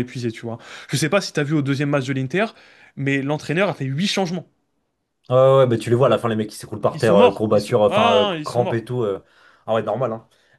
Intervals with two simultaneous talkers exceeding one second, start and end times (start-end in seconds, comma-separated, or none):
6.9-8.9